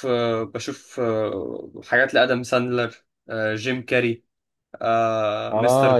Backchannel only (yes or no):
no